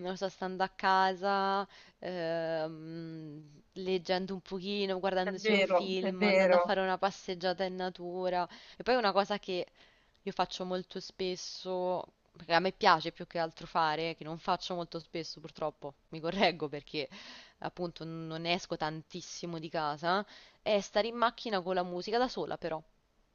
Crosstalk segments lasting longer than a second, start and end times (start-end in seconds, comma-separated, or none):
5.2-6.7